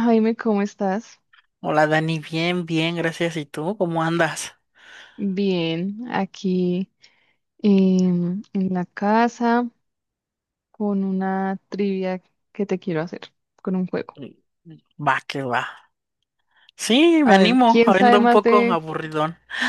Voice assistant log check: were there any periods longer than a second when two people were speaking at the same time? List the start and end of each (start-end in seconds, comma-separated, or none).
17.2-18.8